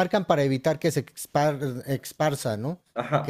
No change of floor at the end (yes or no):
no